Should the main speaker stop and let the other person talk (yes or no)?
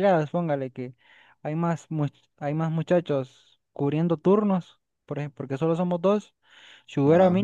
no